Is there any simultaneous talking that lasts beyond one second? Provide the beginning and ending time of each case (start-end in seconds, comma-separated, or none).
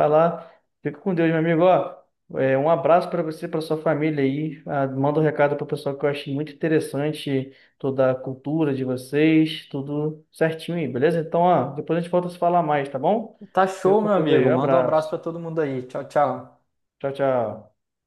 13.8-15.1